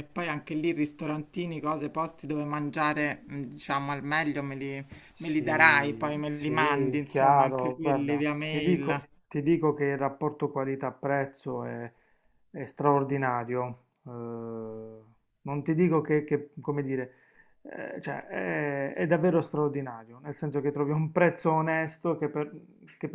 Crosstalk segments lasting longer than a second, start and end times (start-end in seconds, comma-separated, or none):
5.0-9.0